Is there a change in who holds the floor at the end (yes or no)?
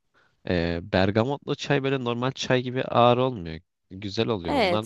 yes